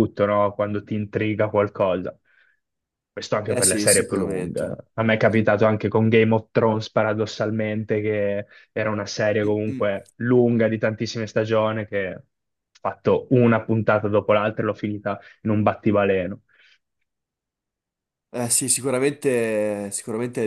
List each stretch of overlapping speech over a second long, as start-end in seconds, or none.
3.4-4.8